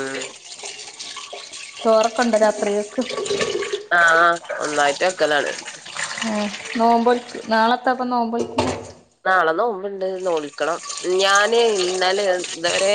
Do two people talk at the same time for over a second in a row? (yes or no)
no